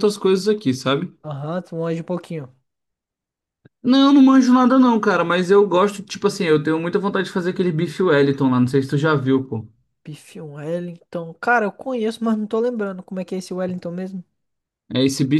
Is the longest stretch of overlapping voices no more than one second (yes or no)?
yes